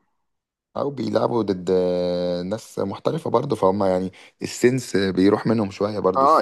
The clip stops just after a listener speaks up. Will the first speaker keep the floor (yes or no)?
no